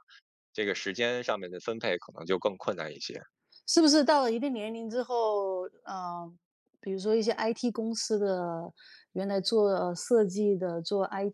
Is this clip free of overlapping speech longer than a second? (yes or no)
yes